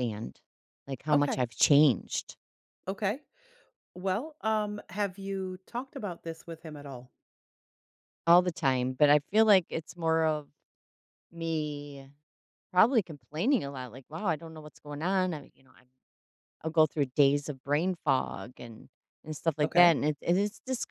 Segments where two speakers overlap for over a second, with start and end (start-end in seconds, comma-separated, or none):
none